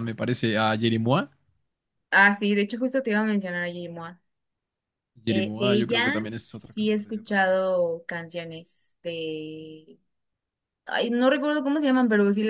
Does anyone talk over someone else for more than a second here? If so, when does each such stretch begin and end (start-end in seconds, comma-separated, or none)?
5.3-7.6